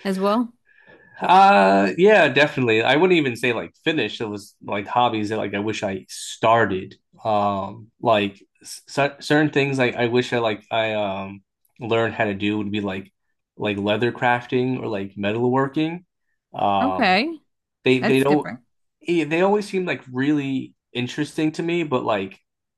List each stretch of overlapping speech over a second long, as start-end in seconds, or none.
none